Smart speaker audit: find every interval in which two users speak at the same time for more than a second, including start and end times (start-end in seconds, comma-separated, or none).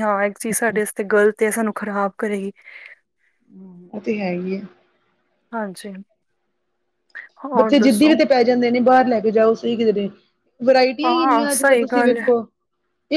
11.0-12.3